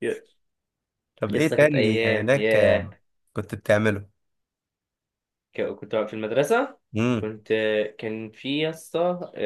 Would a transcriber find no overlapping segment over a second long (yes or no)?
no